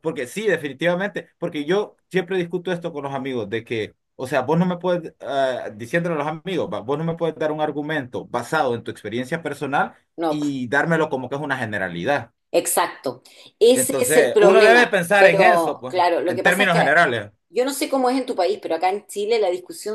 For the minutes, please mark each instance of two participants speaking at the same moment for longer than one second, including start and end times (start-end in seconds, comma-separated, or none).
13.7-16.9